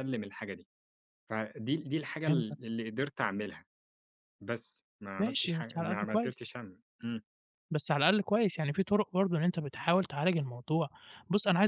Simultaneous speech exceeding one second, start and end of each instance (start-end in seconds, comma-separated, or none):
5.2-6.4